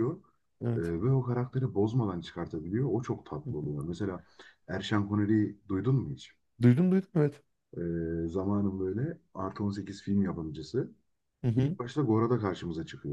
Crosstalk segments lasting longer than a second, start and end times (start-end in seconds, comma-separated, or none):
none